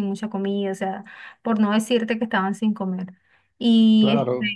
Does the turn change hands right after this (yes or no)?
no